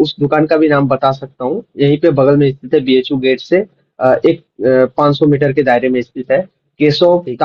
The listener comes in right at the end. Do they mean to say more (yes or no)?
no